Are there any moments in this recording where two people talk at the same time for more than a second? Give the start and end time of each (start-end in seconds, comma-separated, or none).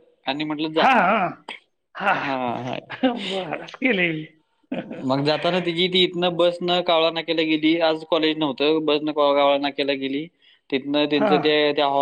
none